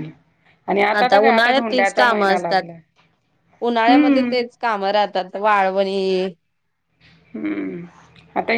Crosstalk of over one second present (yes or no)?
yes